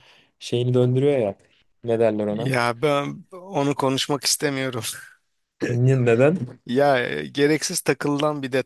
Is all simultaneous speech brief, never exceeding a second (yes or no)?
yes